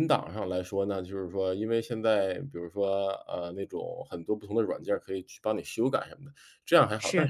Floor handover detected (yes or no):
no